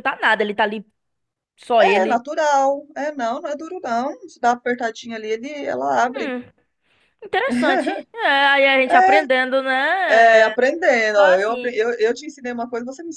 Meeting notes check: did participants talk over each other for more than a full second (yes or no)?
no